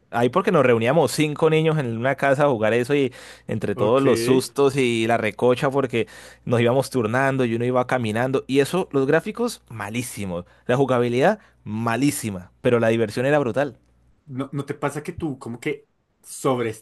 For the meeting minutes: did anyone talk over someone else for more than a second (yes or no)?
no